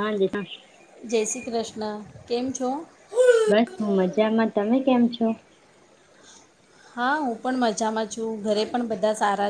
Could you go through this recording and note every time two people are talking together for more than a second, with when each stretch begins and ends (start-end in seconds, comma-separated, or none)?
none